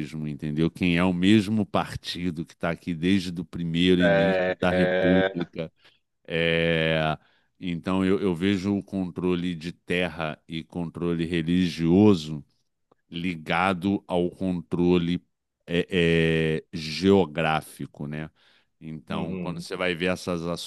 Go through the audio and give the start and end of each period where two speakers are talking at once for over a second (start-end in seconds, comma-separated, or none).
4.0-5.5